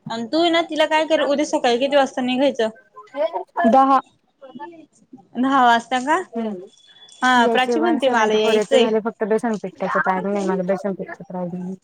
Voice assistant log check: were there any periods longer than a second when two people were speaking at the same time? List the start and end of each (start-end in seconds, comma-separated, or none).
7.5-8.9